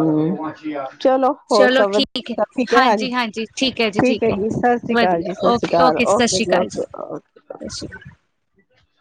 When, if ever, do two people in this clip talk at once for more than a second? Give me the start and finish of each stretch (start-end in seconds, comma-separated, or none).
4.9-6.7